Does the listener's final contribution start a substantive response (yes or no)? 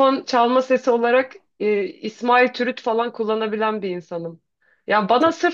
no